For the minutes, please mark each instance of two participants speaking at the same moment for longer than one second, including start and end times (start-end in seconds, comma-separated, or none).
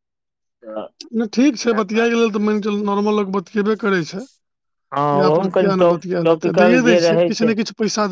5.1-7.5